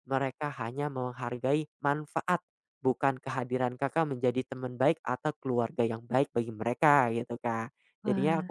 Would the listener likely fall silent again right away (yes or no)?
yes